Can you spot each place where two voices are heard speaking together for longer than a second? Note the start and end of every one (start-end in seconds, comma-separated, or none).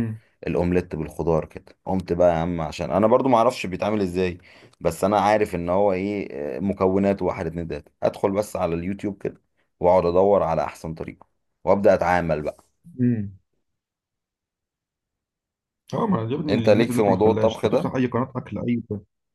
16.5-17.9